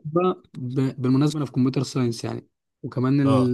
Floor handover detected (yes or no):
no